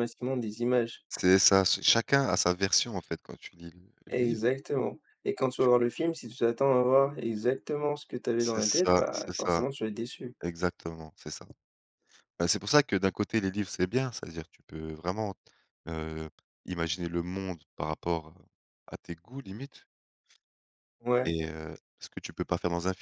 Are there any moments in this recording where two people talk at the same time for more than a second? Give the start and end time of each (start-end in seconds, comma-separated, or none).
8.4-9.7